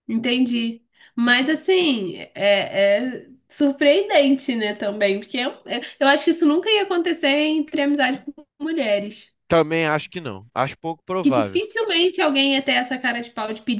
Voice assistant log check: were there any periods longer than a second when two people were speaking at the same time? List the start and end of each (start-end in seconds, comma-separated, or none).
none